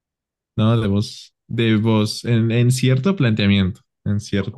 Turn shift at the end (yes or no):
yes